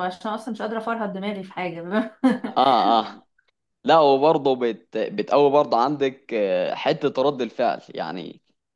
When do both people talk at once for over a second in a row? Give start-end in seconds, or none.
none